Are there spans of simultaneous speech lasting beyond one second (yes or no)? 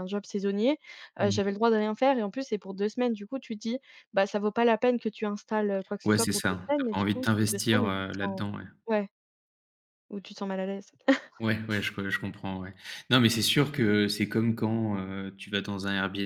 yes